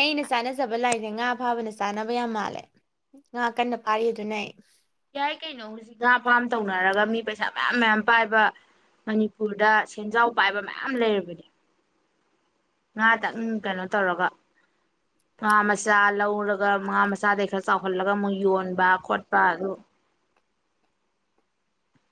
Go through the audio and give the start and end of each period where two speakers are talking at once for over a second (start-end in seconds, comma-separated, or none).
none